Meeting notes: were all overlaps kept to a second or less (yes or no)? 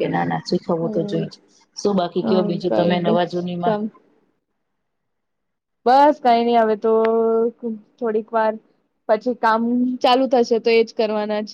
no